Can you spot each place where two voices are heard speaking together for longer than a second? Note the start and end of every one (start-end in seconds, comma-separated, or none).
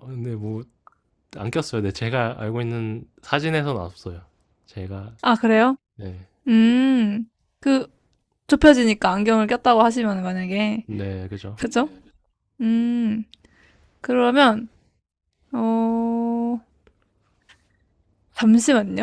none